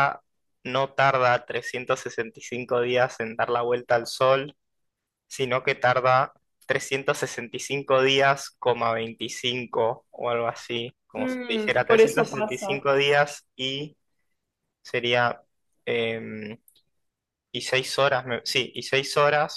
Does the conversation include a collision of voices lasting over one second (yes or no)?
yes